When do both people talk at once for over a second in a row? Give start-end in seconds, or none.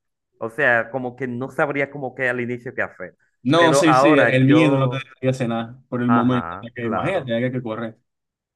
3.5-5.0, 6.1-7.3